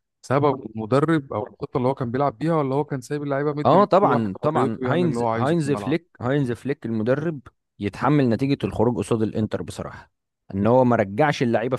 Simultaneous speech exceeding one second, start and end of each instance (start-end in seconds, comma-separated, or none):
3.6-6.0